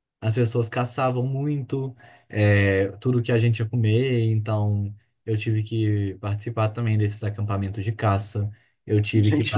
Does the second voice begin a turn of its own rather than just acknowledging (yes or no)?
no